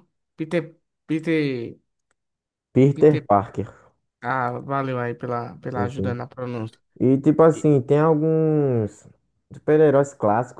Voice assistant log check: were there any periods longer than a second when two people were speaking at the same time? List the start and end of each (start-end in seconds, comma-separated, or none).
none